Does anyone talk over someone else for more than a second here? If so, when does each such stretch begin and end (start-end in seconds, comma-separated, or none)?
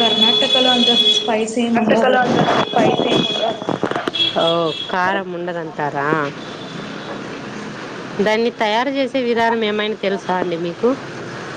none